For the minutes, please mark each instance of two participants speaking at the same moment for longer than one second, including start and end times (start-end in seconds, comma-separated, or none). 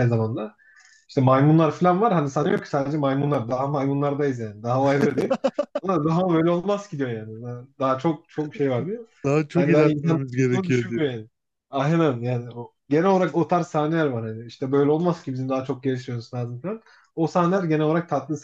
9.5-11.1